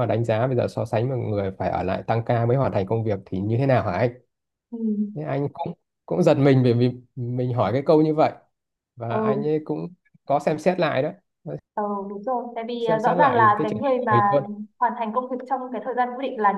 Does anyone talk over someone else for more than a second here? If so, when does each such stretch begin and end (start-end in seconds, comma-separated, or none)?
12.8-14.2